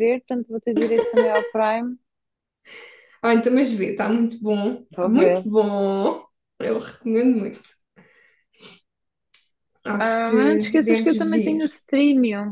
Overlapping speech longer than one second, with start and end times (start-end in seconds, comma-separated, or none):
10.0-11.6